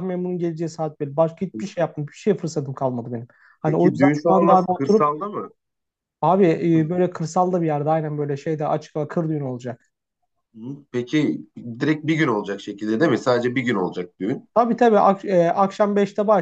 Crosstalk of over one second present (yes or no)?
yes